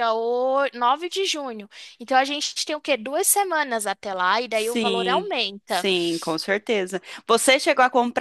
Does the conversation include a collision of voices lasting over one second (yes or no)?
yes